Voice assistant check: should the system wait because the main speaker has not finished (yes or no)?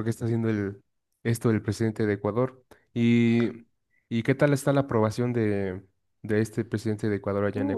no